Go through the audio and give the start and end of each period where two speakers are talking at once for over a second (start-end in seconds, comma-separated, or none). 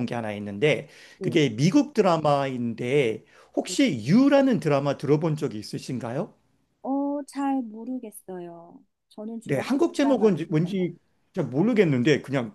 9.4-10.7